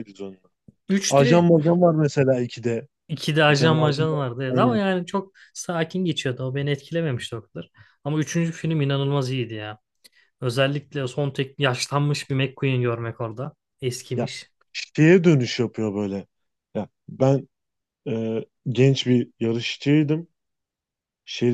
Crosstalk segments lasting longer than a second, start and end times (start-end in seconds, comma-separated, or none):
3.5-4.8